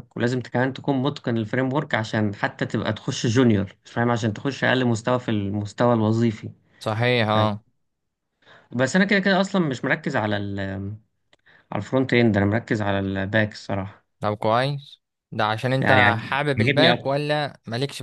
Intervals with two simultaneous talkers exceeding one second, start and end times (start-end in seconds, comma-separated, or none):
15.8-17.1